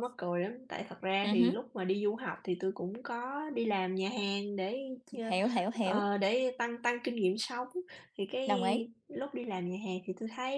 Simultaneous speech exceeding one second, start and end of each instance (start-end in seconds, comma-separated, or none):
none